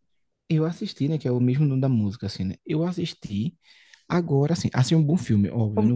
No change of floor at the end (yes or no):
yes